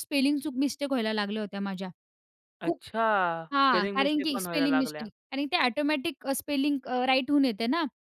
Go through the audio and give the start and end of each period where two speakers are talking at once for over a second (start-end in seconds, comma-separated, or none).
3.5-5.1